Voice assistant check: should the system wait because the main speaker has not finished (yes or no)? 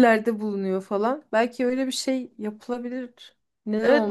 no